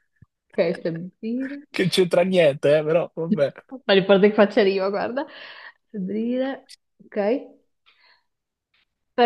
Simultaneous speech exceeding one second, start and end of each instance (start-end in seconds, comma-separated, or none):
none